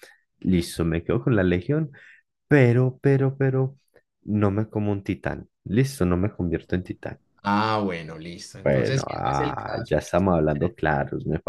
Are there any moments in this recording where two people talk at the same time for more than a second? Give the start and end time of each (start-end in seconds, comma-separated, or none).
8.5-10.8